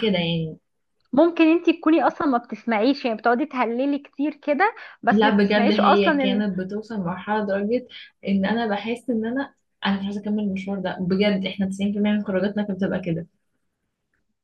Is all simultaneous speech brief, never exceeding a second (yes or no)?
no